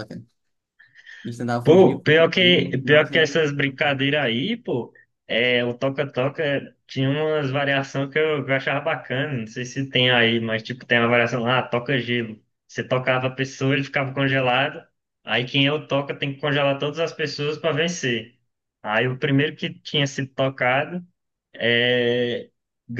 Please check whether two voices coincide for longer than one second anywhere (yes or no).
yes